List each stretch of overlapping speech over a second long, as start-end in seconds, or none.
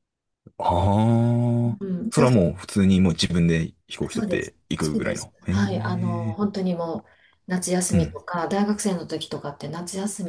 4.1-6.4